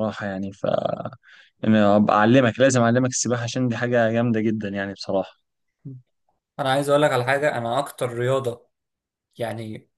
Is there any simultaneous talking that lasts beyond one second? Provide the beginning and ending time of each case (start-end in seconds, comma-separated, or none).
none